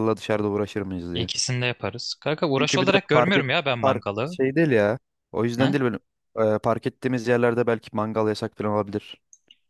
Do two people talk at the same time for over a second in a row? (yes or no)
yes